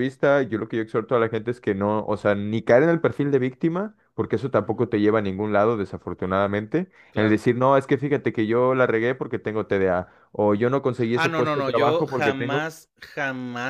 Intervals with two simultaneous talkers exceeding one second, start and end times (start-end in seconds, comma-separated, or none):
11.1-12.6